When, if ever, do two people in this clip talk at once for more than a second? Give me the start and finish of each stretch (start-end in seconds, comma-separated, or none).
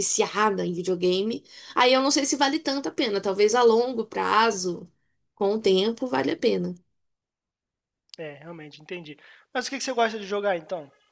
none